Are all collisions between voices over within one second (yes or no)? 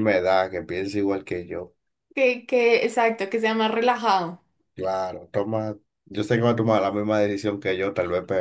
yes